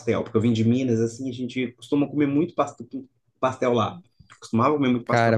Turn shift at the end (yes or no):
yes